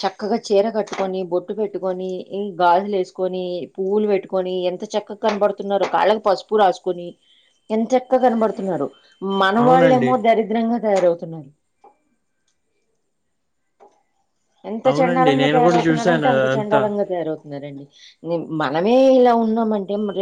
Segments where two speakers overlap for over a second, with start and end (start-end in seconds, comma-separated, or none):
14.9-16.8